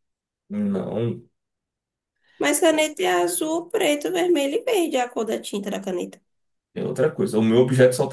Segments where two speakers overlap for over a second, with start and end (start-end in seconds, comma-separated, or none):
none